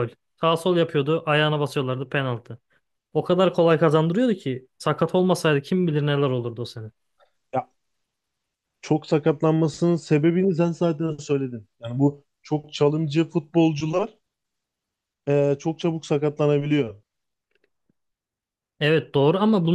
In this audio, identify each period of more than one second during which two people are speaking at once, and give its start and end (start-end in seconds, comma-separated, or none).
none